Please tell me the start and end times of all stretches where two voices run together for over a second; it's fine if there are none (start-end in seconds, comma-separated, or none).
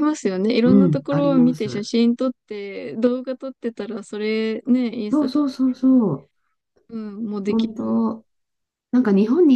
0.7-1.9